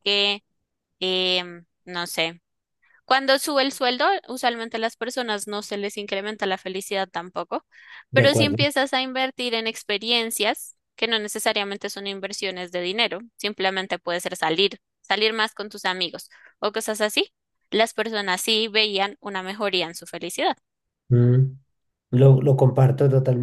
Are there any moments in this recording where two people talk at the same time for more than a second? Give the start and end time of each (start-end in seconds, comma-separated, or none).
none